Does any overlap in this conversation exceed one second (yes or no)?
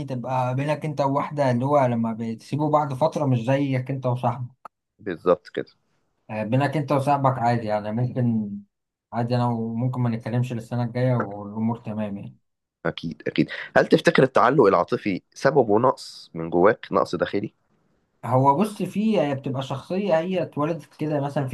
no